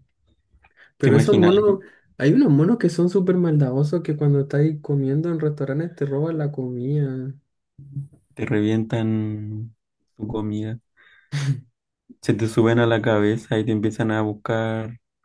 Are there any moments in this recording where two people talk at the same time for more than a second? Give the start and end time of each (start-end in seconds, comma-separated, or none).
none